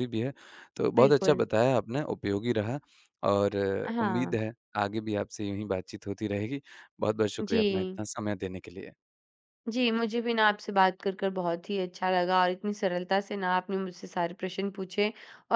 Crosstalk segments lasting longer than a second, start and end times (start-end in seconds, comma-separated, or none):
none